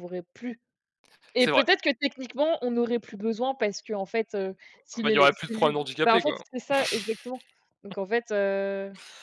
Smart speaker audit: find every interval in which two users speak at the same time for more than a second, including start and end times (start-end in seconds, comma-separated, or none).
5.0-6.4